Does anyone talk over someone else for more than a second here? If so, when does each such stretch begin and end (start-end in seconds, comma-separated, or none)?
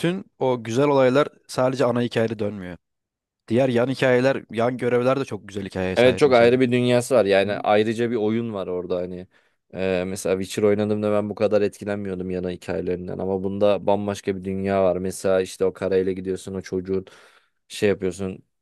none